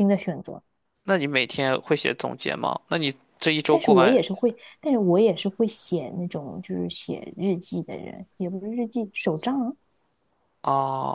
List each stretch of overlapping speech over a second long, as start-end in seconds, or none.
none